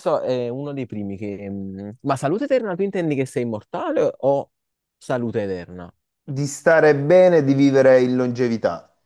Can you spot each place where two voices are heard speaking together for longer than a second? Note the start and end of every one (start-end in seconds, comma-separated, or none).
none